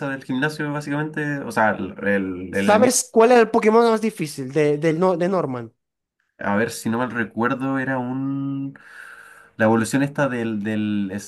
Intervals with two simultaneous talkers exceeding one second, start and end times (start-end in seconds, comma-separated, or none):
none